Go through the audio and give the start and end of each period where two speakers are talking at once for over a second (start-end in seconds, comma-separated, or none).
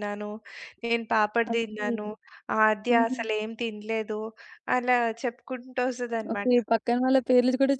none